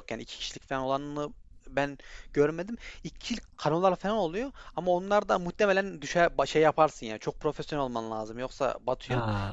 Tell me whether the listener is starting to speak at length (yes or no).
yes